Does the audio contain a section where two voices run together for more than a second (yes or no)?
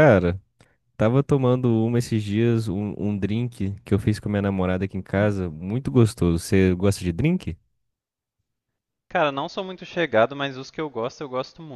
no